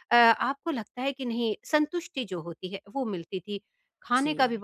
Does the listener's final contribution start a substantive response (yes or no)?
no